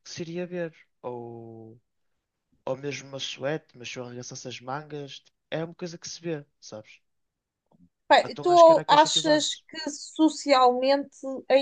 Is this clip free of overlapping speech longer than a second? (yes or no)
no